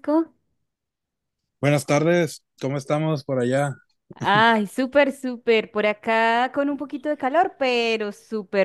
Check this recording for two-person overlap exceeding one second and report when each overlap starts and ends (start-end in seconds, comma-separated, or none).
none